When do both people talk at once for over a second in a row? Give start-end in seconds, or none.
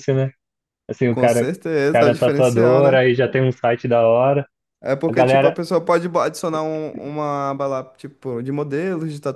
1.1-3.0